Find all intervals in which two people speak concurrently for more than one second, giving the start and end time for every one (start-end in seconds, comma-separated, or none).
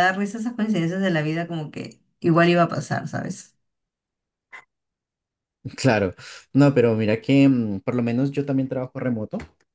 none